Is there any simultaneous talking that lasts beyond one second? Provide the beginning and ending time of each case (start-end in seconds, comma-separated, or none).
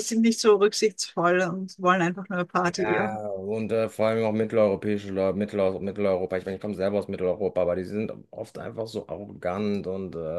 none